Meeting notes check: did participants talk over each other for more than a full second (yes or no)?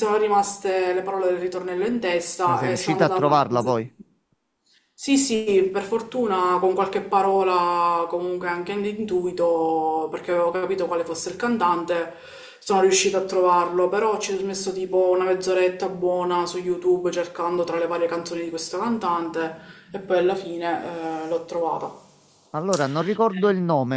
yes